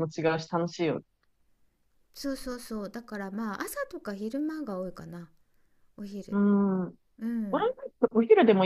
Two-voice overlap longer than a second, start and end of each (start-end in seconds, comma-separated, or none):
none